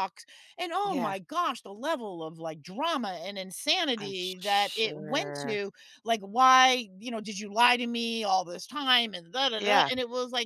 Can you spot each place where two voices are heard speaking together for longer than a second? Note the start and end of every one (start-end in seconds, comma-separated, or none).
4.0-5.6